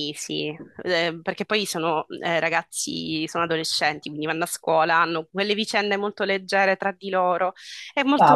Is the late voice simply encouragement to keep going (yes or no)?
no